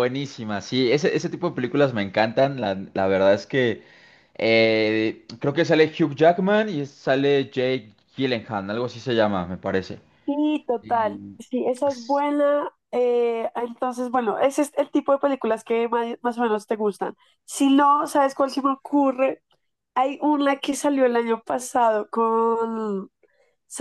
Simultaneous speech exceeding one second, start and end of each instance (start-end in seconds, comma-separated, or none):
none